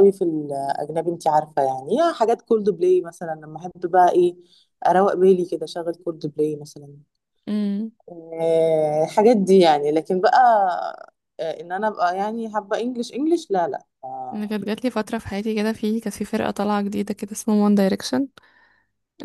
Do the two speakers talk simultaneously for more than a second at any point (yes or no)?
no